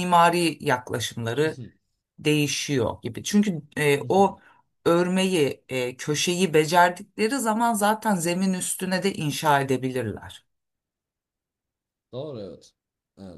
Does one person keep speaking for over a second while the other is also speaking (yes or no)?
no